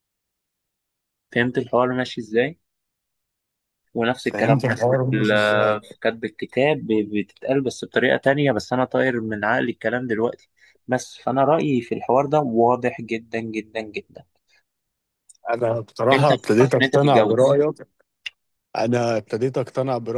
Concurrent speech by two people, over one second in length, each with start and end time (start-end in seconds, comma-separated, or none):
4.3-5.8, 16.1-17.6